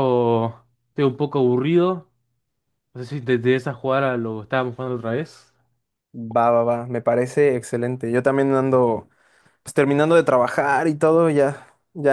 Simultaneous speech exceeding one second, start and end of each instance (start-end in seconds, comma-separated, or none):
none